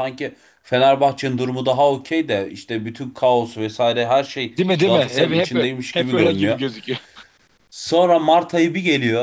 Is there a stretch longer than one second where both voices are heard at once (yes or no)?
yes